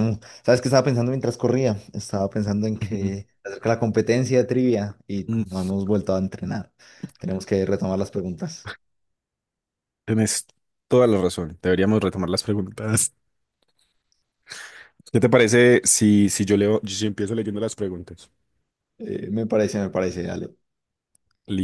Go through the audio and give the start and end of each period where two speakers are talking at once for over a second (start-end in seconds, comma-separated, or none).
none